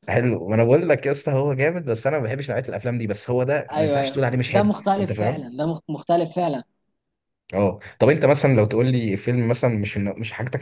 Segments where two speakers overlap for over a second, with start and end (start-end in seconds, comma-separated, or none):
3.7-5.5